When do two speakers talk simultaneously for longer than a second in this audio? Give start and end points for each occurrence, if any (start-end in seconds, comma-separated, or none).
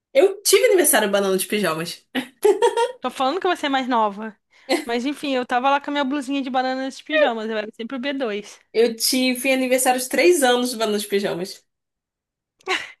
none